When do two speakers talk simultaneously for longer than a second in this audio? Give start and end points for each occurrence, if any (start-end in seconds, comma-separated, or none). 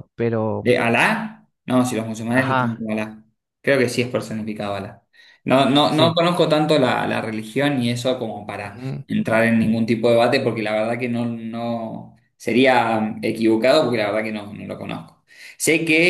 none